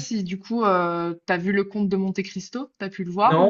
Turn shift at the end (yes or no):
yes